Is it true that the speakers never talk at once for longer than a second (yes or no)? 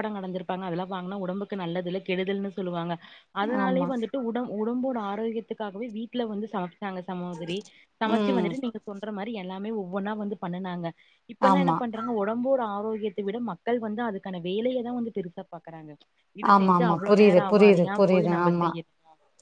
no